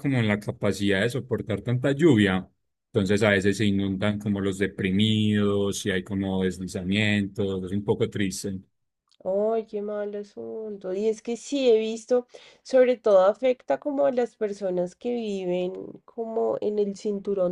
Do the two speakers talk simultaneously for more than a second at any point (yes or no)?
no